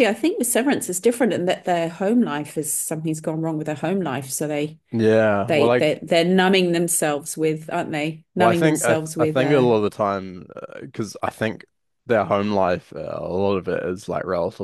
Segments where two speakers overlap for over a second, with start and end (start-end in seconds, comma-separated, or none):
8.4-9.7